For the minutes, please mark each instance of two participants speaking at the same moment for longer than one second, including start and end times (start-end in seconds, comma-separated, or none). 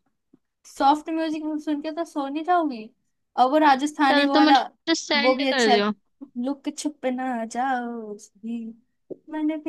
none